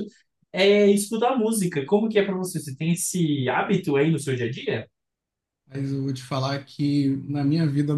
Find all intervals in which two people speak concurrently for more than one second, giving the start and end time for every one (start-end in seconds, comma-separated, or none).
none